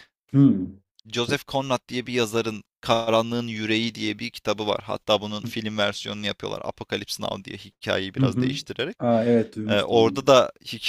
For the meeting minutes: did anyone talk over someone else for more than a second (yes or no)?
no